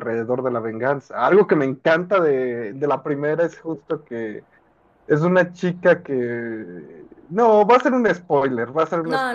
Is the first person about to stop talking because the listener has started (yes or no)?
yes